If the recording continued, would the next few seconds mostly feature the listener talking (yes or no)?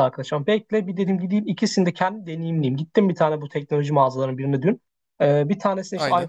no